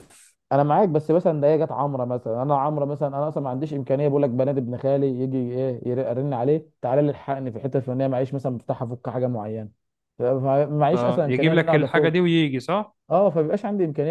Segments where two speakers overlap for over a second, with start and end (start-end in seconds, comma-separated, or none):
10.9-12.1